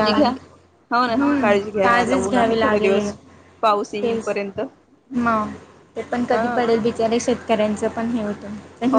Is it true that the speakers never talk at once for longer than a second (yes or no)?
no